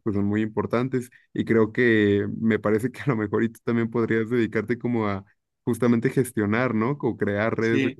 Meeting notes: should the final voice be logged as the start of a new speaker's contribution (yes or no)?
no